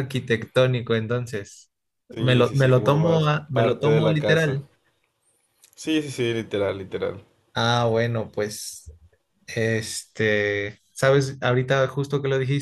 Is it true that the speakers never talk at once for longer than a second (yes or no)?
no